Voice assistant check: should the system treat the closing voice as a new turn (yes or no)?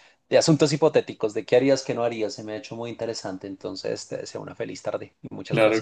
yes